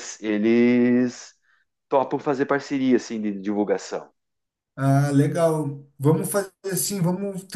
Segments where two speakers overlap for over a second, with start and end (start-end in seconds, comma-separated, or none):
none